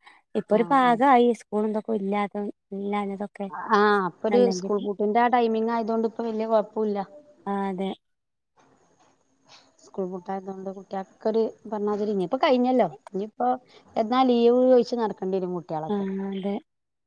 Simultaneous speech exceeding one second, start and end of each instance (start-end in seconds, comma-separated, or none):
none